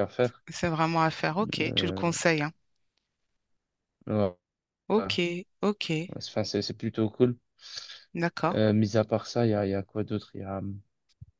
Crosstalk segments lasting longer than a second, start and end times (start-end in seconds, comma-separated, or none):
none